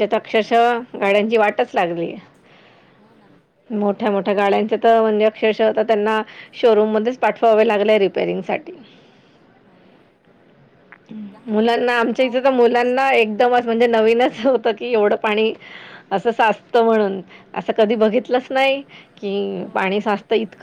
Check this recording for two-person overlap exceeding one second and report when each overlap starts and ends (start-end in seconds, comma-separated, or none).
11.5-13.4